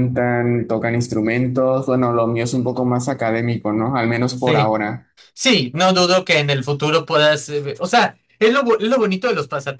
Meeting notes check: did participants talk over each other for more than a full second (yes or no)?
no